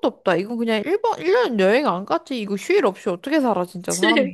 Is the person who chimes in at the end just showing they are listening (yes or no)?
no